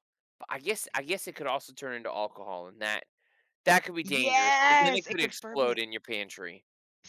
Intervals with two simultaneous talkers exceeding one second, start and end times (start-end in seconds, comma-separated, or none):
4.0-5.8